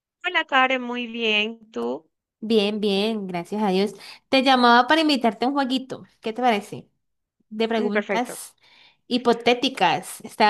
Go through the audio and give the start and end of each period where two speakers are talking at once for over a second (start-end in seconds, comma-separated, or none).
none